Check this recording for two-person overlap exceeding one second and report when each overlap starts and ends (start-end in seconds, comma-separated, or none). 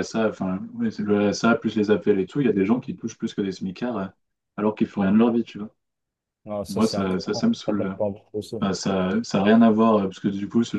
6.7-7.9